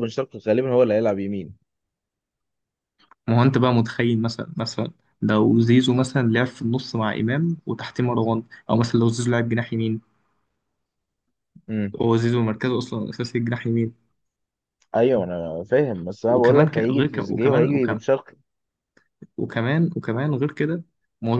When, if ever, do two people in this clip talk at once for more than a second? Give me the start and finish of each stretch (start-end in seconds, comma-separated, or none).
16.3-18.0